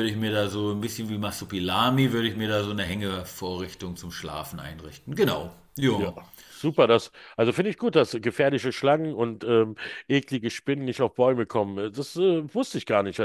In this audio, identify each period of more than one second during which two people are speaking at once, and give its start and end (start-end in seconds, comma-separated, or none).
none